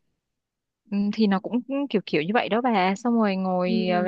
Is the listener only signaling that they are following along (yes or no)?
yes